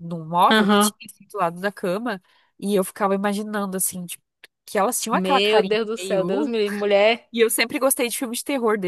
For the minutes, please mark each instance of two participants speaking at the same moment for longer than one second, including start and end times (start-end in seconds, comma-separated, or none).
5.1-6.5